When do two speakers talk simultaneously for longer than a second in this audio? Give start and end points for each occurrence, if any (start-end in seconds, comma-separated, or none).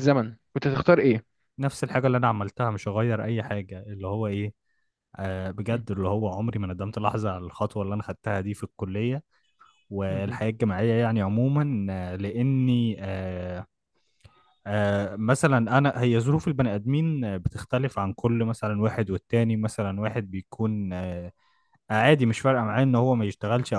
none